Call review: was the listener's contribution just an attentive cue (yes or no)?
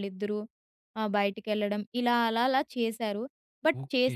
yes